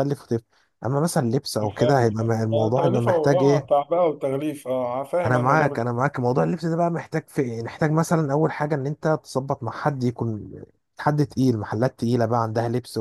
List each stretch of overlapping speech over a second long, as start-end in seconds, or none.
1.6-3.7